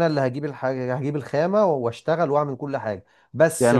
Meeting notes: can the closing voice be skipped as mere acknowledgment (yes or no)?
no